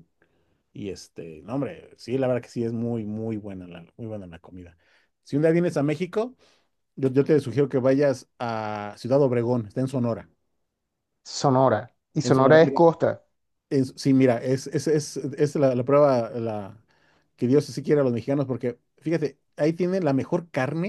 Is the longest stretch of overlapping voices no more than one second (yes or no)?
yes